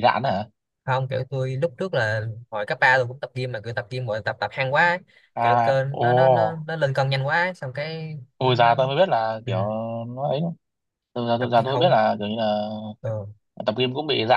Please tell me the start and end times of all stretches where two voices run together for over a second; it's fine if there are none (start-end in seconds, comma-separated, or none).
5.4-6.6